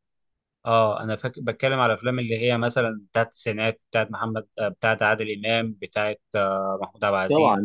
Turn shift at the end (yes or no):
yes